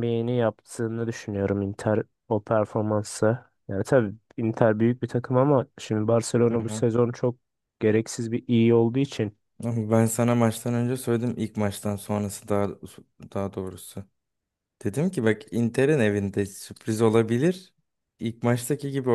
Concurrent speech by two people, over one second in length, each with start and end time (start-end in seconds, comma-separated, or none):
none